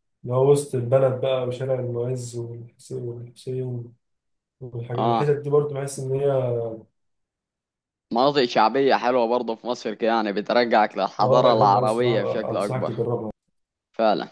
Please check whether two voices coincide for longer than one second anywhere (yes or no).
yes